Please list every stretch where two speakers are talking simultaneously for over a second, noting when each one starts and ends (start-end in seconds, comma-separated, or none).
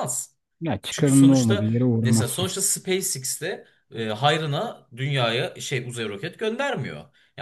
0.9-2.5